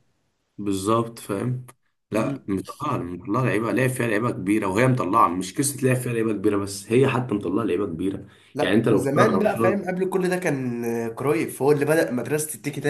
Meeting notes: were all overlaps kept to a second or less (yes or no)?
no